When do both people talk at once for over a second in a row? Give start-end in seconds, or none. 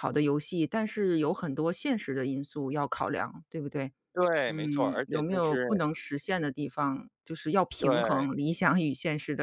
4.5-5.8